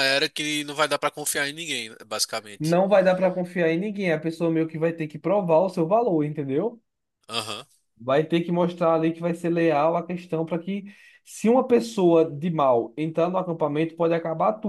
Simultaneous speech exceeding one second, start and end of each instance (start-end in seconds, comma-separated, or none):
none